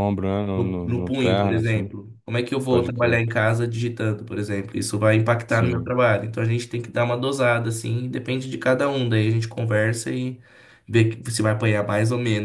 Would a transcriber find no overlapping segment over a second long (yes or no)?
no